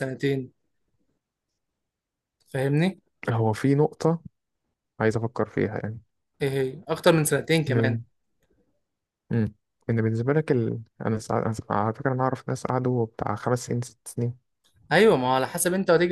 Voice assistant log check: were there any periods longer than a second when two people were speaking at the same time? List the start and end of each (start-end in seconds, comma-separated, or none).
none